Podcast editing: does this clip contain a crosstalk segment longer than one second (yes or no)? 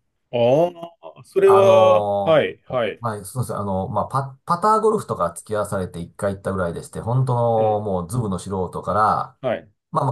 yes